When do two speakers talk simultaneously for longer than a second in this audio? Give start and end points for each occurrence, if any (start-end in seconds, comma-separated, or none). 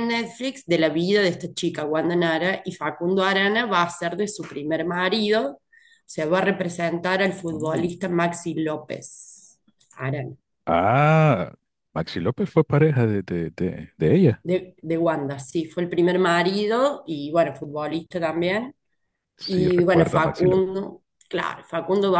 19.5-20.7